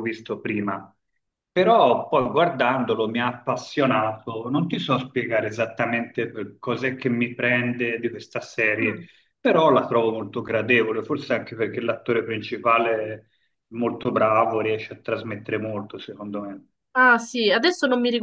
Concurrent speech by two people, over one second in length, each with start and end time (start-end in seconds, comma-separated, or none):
none